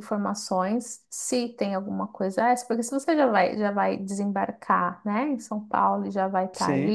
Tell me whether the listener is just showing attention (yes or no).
yes